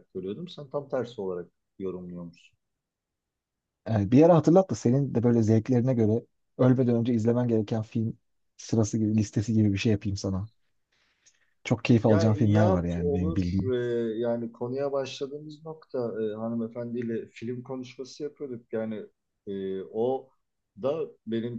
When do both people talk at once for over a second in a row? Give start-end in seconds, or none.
12.1-13.7